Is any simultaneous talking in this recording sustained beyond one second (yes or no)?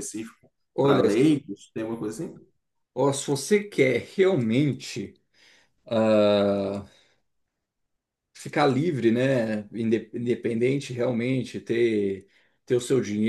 no